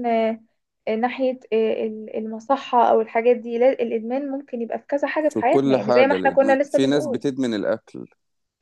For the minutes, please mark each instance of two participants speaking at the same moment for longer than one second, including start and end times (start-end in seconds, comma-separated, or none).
5.3-7.2